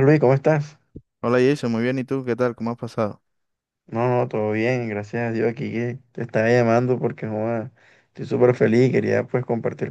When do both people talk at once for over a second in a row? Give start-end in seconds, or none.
none